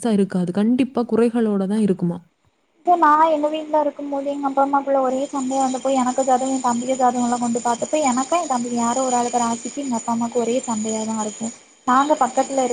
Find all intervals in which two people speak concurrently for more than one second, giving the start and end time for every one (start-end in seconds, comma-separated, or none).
none